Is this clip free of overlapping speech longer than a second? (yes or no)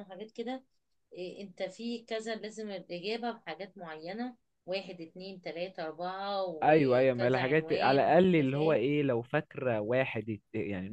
no